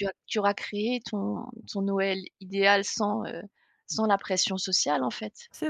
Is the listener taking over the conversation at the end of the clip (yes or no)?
yes